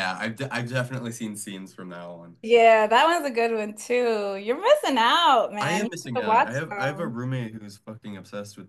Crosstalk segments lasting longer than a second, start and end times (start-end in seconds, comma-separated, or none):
5.6-7.2